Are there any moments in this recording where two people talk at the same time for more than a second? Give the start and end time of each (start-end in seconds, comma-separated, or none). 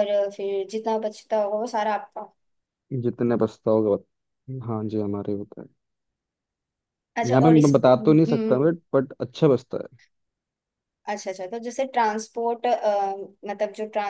7.2-8.7